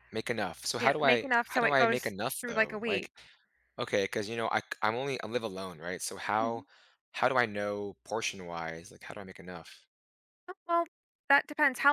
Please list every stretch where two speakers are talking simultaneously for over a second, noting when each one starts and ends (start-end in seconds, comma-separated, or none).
0.8-3.1